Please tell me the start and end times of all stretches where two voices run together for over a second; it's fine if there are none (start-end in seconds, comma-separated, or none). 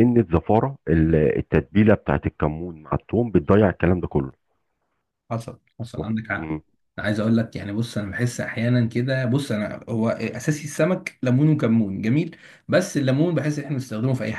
none